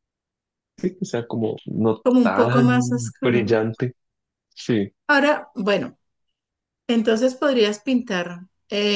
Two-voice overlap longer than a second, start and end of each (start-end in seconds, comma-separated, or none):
2.0-3.5